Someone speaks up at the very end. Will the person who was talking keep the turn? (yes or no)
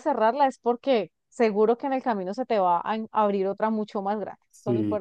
no